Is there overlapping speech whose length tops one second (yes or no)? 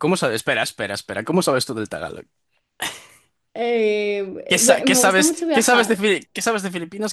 yes